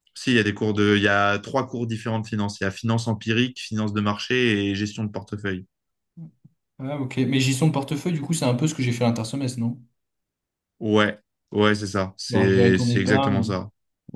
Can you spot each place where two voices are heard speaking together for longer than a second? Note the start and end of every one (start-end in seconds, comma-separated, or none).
12.3-13.5